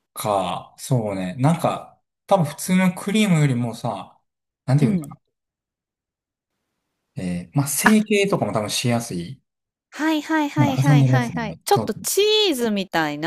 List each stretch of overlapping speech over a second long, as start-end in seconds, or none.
10.6-11.9